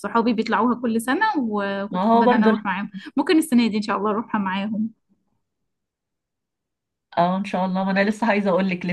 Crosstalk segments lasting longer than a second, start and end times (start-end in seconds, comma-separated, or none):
none